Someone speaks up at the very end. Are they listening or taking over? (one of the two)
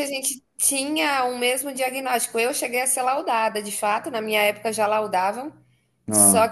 listening